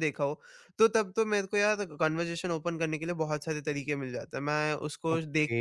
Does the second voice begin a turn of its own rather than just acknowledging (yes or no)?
no